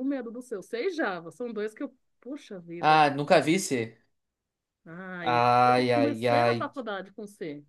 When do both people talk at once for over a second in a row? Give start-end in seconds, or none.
5.2-6.7